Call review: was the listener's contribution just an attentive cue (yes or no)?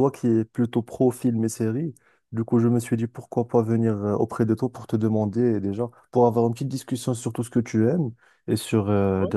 yes